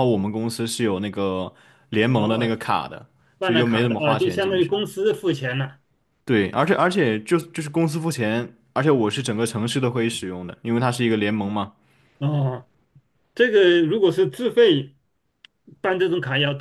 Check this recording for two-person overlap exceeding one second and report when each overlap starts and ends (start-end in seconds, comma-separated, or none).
3.4-4.8